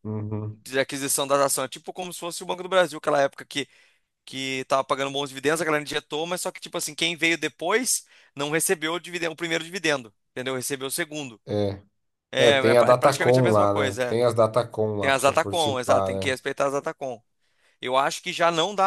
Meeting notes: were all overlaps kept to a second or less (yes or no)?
no